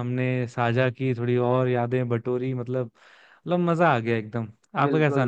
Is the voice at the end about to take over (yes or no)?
yes